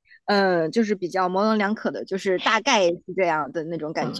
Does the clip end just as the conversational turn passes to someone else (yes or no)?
yes